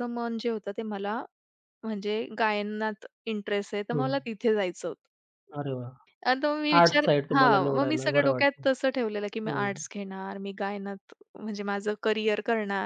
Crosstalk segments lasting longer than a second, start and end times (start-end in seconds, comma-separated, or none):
6.8-8.6